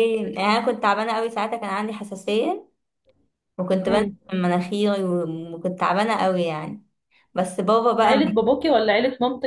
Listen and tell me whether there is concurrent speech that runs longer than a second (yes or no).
no